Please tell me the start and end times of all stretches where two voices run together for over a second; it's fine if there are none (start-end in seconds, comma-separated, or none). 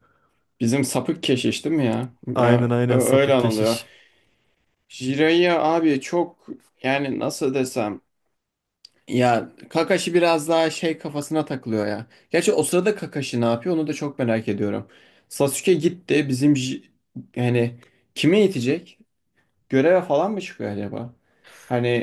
2.4-3.8